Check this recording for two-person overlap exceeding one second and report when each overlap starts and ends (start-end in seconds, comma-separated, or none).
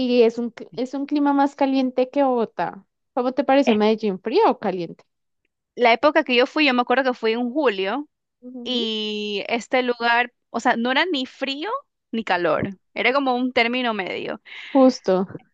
none